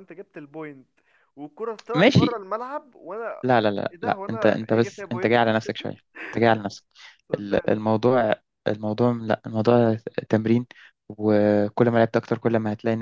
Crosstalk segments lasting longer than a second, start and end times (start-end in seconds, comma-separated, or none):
3.9-5.4